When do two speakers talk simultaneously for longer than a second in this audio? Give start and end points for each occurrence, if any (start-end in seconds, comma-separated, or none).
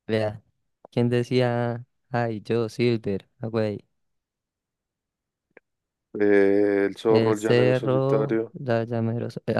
7.1-8.6